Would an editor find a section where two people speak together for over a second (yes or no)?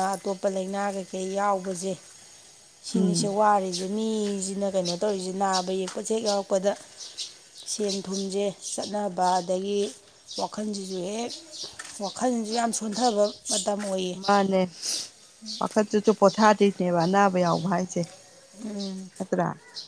no